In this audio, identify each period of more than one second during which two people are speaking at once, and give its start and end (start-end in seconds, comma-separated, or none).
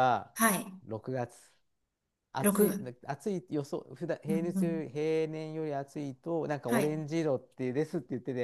none